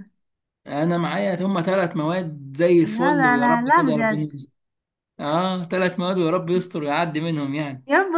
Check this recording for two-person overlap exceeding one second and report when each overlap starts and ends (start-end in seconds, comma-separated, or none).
2.8-4.4